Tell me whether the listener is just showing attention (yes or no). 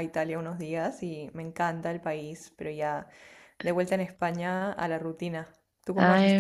no